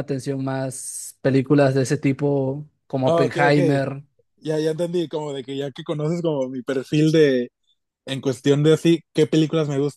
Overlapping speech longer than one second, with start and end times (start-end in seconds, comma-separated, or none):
none